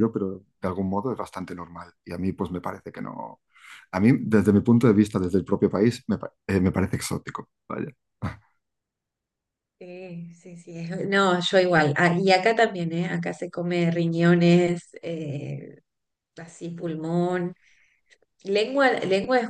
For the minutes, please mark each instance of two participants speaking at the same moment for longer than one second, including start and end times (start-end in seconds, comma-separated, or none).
none